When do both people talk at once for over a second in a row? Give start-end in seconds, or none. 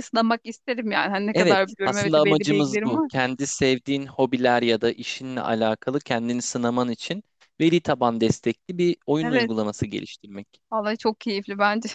1.3-3.1